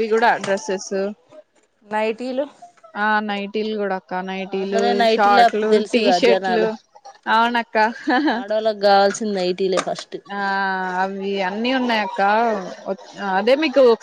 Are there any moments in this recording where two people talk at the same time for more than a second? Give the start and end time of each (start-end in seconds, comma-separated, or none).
4.6-6.7